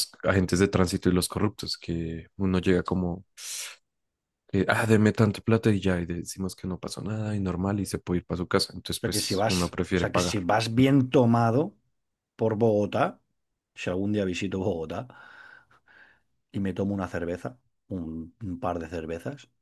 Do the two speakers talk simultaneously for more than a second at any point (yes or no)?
yes